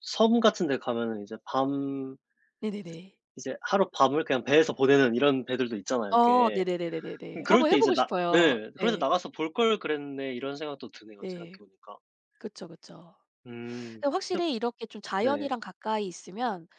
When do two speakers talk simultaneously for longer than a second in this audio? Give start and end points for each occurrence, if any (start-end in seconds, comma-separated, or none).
7.4-9.1